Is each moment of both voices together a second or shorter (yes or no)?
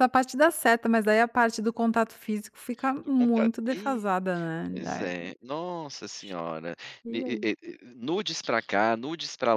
yes